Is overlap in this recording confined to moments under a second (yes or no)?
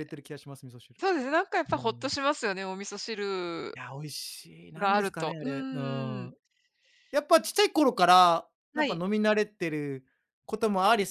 no